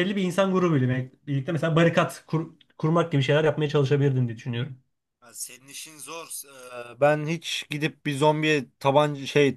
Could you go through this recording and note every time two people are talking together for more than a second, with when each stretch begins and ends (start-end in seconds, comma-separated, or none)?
none